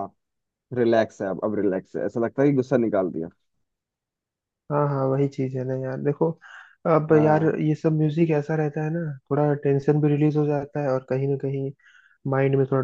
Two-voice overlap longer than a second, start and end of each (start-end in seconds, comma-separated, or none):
none